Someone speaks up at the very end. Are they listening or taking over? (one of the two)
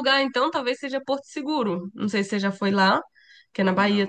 listening